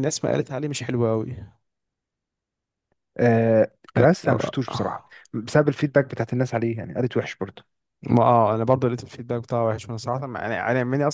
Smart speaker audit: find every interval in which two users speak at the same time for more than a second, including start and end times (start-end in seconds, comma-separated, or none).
none